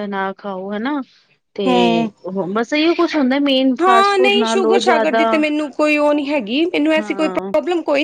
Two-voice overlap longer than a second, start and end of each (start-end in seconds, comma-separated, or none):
3.8-5.2